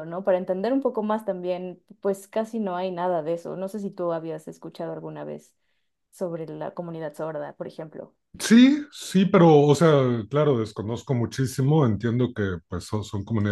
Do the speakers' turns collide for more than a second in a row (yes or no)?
no